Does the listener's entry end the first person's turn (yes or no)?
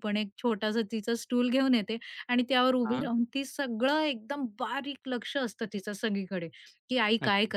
no